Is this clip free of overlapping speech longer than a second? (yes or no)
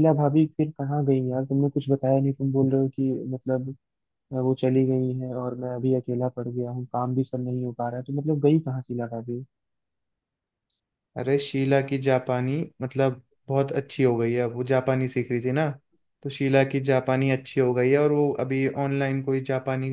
yes